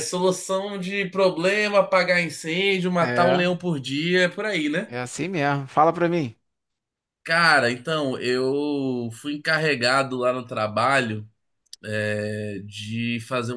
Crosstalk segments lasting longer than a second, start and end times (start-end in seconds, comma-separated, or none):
none